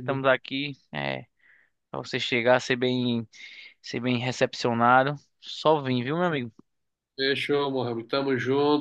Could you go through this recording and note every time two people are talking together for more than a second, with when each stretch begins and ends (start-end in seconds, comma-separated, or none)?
none